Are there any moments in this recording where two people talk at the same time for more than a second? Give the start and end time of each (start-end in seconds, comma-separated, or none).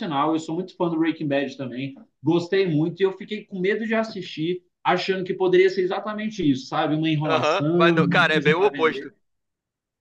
7.2-9.1